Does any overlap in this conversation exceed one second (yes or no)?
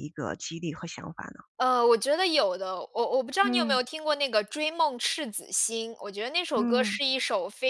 no